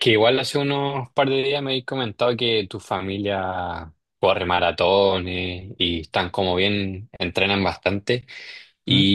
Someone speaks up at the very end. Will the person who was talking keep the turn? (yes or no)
yes